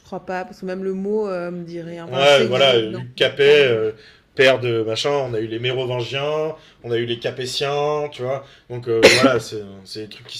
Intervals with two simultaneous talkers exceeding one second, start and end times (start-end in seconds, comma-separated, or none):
2.1-3.7